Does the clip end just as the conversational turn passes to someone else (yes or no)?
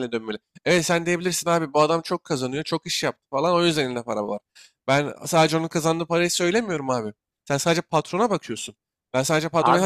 no